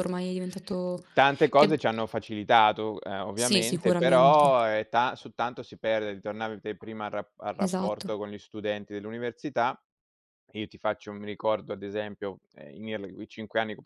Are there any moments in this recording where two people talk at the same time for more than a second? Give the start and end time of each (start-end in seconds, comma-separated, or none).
3.3-4.6